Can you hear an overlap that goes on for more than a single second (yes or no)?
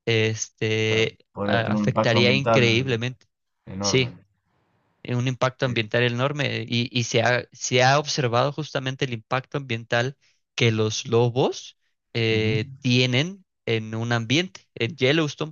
yes